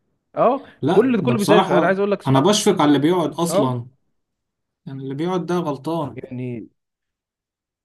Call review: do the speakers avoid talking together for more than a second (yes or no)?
no